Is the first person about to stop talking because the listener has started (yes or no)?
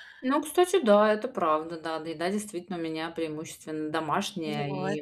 no